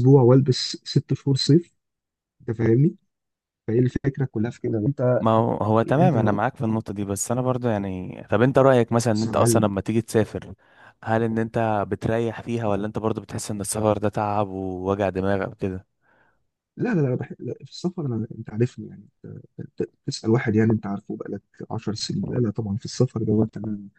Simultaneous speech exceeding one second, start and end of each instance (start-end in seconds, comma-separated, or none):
none